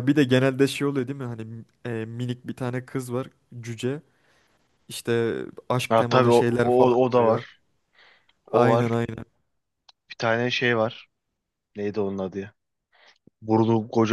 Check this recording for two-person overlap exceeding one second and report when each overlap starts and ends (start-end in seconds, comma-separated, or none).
5.9-7.4